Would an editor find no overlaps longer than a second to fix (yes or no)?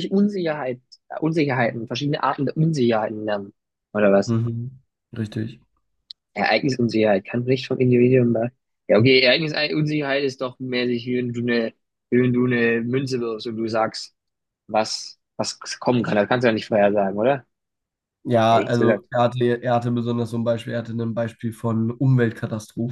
yes